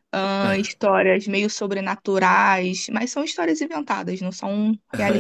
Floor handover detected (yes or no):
yes